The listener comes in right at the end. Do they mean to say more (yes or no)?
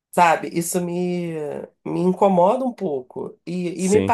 no